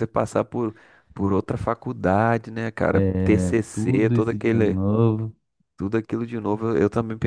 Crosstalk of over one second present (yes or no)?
yes